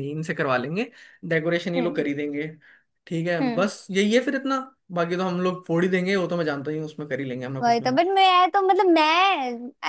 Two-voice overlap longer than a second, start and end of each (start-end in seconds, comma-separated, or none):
none